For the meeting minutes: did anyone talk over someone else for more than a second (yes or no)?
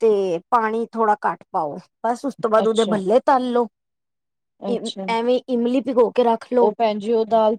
no